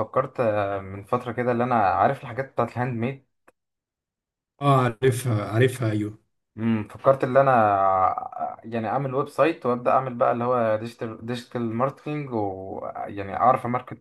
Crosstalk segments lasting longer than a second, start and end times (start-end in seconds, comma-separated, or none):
none